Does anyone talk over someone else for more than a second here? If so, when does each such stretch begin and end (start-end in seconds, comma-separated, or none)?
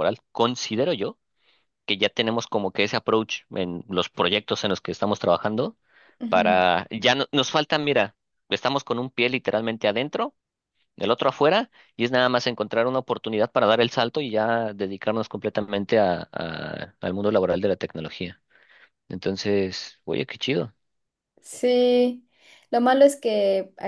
none